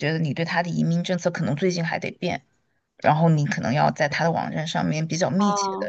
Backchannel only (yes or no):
yes